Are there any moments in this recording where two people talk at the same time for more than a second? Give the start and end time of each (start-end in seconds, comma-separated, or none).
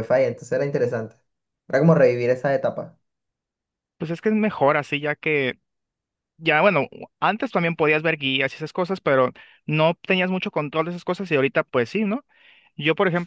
none